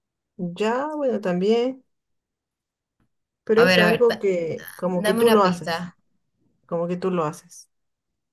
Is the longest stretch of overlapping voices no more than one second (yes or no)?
no